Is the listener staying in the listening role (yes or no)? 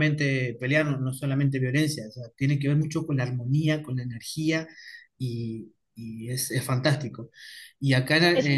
yes